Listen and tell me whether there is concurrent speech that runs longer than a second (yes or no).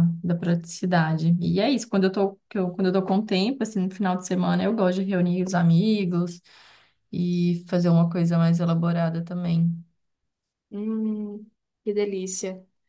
no